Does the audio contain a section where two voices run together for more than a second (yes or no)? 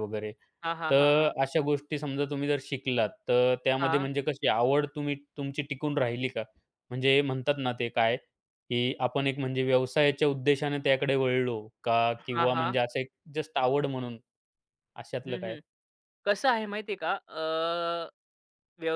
no